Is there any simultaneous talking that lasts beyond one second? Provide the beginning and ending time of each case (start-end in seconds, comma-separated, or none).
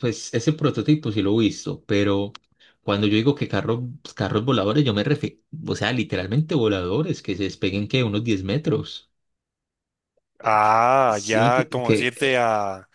10.4-12.4